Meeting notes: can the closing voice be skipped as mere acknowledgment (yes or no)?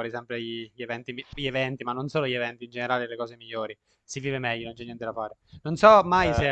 yes